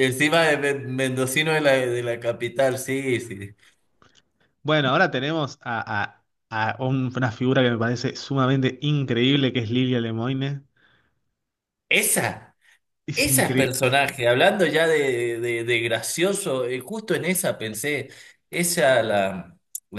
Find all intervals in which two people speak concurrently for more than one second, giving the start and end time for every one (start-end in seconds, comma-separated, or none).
none